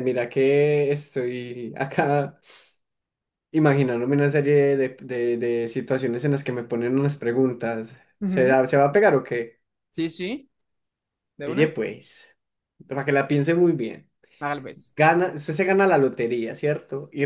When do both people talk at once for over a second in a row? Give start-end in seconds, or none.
none